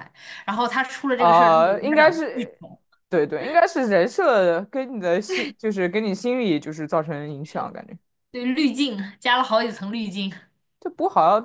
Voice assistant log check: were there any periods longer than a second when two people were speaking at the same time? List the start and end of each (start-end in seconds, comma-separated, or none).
1.1-2.6